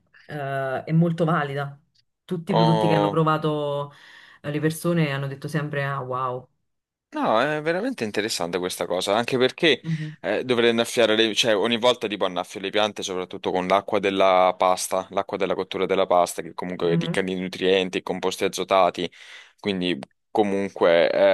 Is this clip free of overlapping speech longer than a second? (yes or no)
yes